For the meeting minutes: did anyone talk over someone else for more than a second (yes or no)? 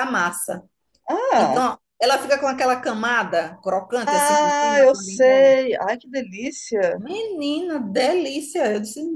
yes